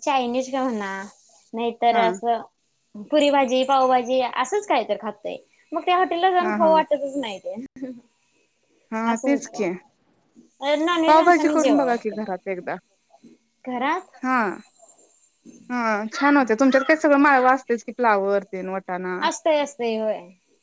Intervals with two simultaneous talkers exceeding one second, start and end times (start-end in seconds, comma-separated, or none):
11.1-12.3